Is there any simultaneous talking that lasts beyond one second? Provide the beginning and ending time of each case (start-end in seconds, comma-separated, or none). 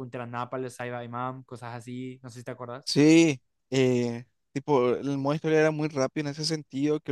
none